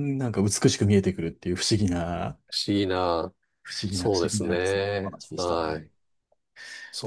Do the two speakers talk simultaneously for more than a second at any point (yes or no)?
yes